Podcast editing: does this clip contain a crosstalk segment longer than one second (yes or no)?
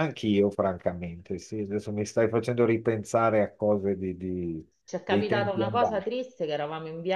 yes